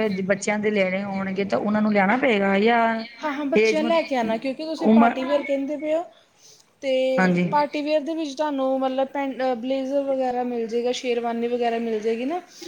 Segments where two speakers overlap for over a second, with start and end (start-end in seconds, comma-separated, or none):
3.6-5.2